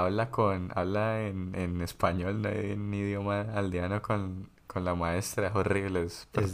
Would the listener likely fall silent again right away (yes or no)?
no